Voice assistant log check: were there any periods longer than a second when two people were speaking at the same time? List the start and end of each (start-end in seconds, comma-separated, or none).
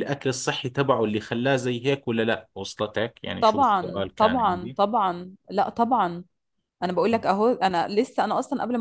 3.4-4.8